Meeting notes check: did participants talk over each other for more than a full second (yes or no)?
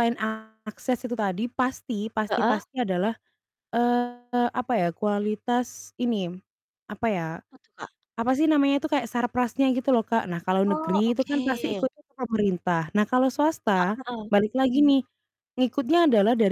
yes